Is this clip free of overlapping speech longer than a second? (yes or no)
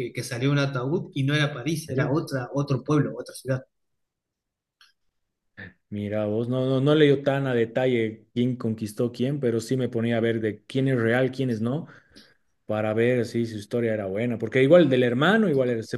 yes